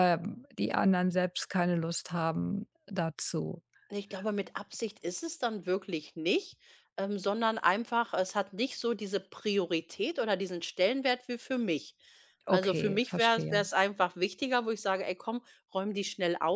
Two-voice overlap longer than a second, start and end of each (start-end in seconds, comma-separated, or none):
12.5-13.7